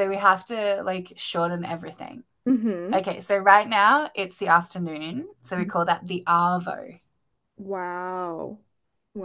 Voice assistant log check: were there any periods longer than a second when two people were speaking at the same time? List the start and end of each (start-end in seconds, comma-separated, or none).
none